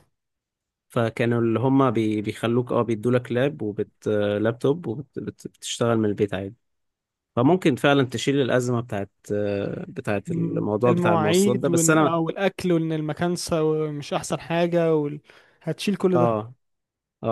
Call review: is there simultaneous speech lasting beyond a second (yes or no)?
yes